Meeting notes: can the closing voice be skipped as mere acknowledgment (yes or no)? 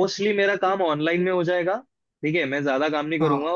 yes